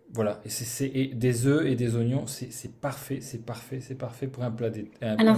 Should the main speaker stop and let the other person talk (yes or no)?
yes